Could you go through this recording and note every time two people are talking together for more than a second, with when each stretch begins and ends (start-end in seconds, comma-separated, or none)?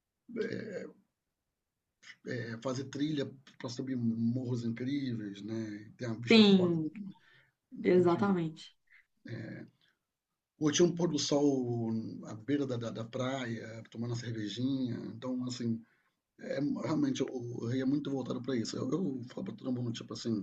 none